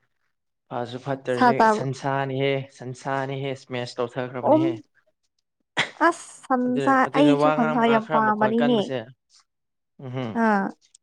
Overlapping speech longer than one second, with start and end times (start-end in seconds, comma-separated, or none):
6.7-8.7